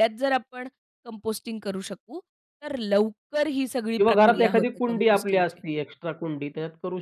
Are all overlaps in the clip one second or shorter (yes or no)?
no